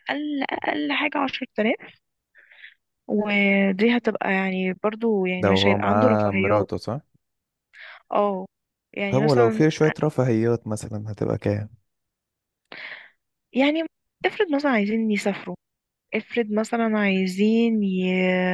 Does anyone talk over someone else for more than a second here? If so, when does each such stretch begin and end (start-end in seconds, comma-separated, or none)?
5.4-6.7